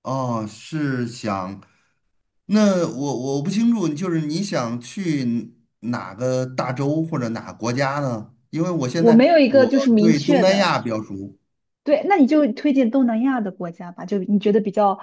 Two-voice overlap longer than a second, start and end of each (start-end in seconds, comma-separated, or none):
8.9-10.7